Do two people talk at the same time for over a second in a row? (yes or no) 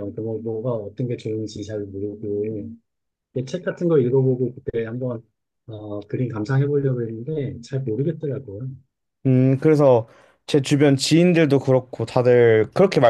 no